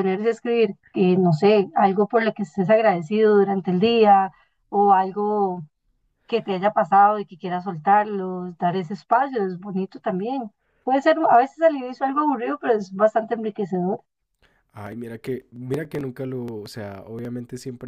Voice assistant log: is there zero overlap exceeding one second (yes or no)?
yes